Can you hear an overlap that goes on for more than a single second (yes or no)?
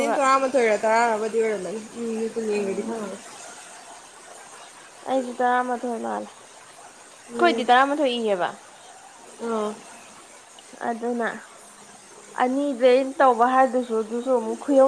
no